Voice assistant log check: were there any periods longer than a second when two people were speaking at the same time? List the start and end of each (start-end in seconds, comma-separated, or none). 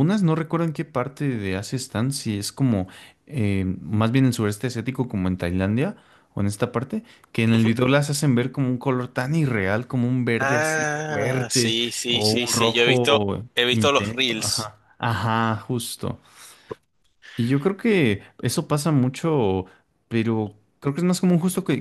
10.4-14.7